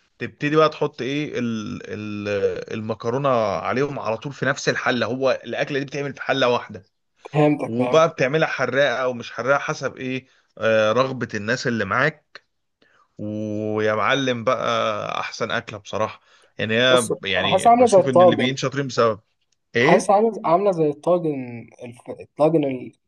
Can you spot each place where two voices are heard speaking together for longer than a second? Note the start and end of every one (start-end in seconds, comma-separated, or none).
16.9-18.6